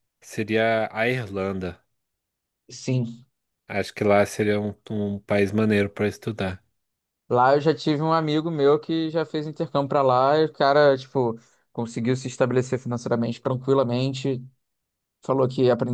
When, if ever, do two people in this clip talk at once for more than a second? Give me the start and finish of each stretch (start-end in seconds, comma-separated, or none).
none